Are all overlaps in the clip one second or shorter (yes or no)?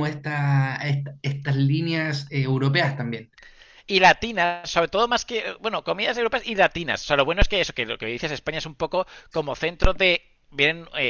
yes